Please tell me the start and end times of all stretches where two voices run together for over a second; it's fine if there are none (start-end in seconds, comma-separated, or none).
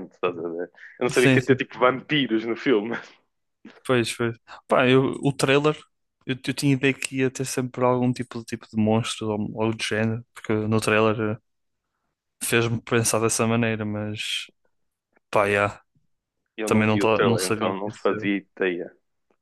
16.6-18.3